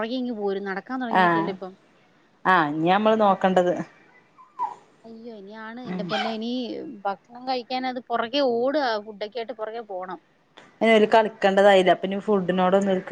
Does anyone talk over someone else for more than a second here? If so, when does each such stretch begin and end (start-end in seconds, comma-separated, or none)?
none